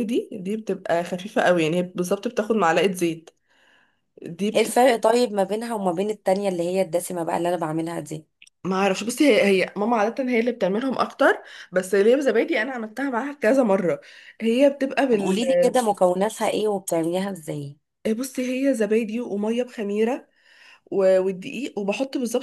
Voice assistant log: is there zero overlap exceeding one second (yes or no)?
yes